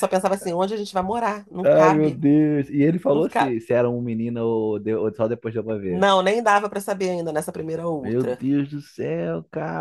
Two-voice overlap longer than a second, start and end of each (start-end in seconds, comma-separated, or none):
none